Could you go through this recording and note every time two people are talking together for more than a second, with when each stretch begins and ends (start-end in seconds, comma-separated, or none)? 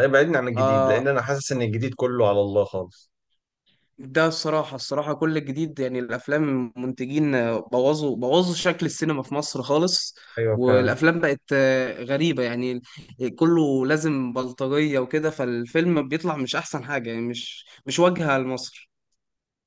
none